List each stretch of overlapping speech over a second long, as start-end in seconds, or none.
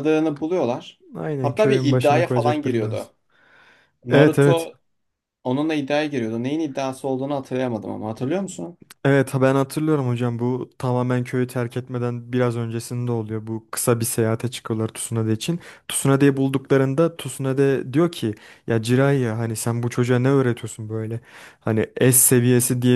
1.4-3.1